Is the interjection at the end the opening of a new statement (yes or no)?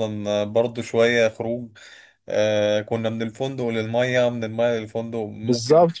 yes